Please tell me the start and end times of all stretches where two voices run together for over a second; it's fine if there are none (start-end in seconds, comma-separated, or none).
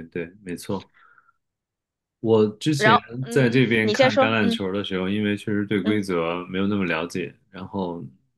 2.8-4.6